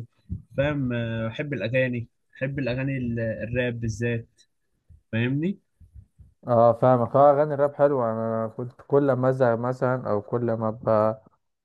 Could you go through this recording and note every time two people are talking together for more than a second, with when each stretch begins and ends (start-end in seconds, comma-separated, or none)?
none